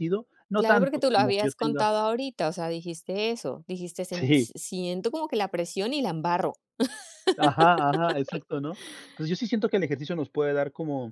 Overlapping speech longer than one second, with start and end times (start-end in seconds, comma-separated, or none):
0.6-1.9